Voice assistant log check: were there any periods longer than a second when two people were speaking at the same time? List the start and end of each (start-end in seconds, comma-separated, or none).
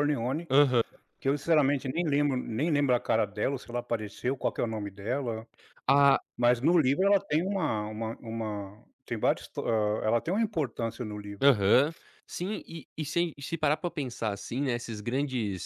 none